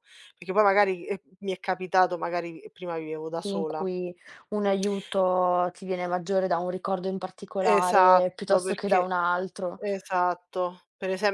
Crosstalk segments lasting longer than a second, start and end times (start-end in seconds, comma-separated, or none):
7.6-9.1